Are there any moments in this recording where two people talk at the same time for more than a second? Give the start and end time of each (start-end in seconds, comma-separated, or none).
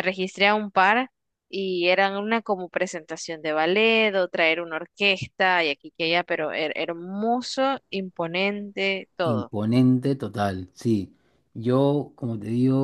none